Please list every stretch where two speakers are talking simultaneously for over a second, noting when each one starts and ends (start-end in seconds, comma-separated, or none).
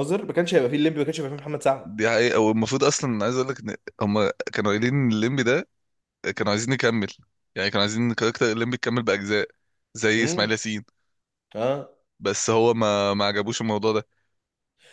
none